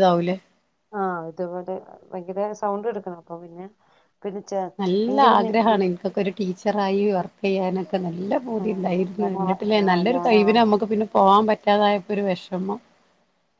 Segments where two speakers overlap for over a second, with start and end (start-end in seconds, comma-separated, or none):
8.6-10.3